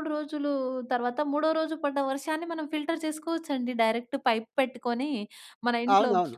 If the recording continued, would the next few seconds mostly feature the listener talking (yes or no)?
no